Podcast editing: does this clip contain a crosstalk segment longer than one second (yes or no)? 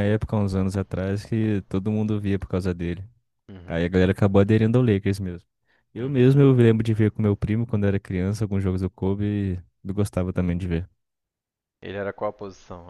no